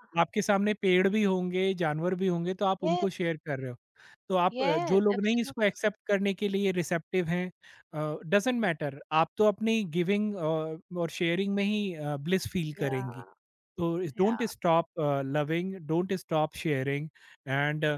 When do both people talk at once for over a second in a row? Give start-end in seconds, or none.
4.5-5.7